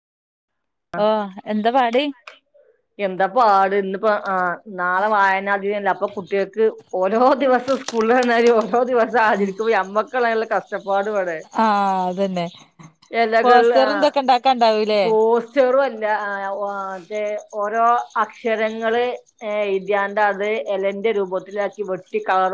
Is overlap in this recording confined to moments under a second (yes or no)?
yes